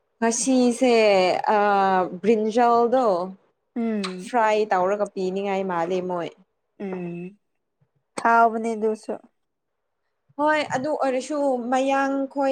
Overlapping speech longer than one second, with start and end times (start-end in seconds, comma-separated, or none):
none